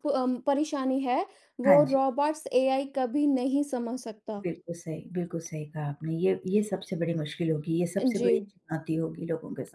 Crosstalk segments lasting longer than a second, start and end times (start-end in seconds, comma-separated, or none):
none